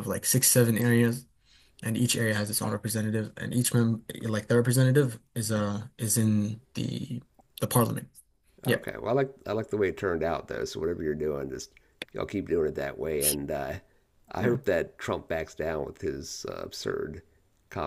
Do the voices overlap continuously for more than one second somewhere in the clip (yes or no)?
no